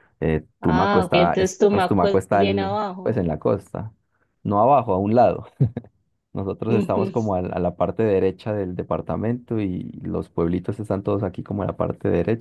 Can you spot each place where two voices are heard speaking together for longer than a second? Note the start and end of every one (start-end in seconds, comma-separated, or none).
0.6-3.2